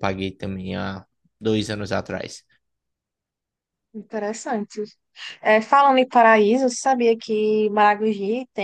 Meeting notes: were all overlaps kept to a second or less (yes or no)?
yes